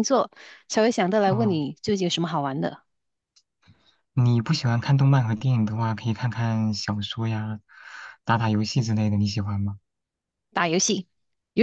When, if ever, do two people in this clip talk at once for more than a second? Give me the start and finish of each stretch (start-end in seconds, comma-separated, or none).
none